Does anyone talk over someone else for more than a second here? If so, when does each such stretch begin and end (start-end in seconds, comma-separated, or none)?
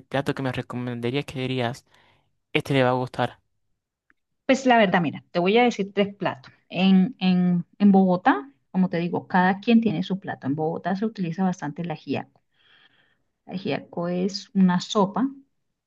none